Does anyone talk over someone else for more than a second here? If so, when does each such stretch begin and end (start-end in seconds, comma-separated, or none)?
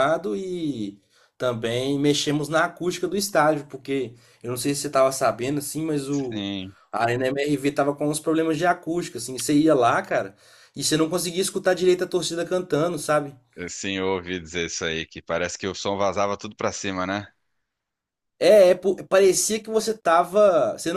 none